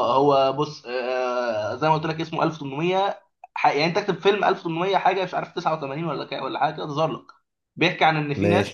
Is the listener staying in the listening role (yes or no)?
yes